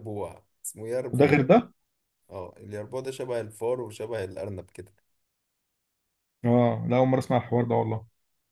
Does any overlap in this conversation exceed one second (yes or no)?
no